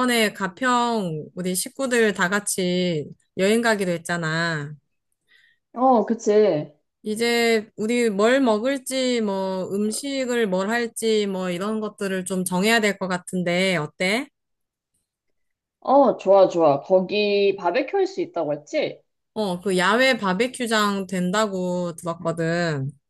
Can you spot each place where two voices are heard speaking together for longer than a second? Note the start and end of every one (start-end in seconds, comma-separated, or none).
none